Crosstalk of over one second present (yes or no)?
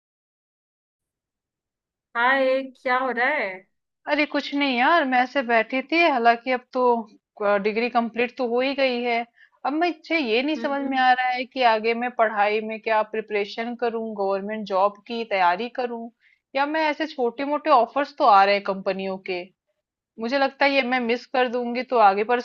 no